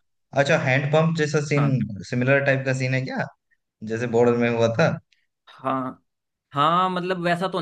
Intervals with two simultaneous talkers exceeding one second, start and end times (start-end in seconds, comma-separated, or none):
none